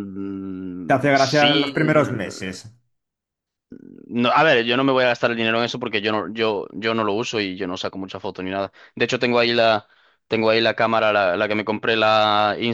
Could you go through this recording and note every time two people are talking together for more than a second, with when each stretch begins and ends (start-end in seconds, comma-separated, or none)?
0.9-2.3